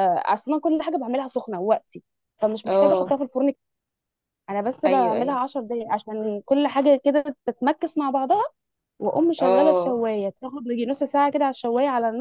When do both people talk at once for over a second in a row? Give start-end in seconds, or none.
none